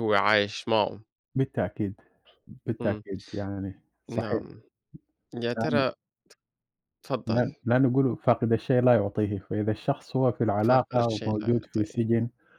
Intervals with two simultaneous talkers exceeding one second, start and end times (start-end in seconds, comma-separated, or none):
10.6-12.1